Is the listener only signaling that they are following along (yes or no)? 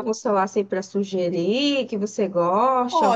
no